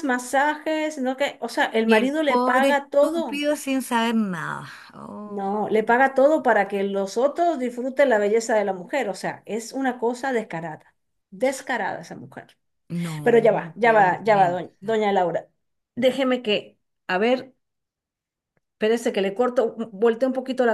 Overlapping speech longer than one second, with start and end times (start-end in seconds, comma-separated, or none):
1.8-3.4, 13.2-15.1